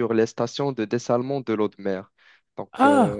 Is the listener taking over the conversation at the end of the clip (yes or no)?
yes